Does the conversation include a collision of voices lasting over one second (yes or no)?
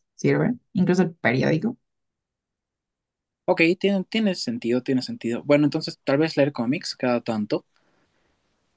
no